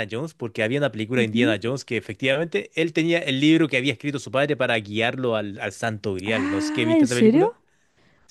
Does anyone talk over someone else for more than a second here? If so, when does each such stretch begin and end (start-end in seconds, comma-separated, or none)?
6.2-7.5